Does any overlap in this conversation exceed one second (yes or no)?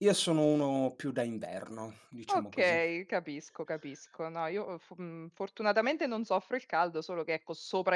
no